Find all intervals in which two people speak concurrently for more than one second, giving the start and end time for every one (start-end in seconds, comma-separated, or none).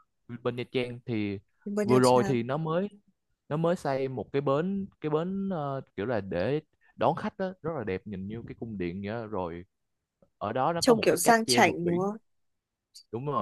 10.8-12.1